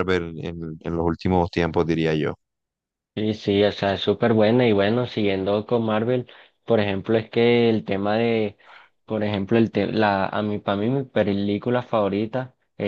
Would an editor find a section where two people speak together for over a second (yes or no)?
no